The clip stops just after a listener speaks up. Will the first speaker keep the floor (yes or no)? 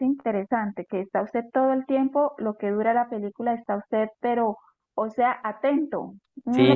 yes